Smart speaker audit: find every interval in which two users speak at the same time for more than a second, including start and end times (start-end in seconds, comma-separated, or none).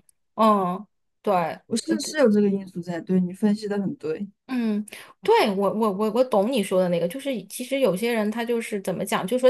none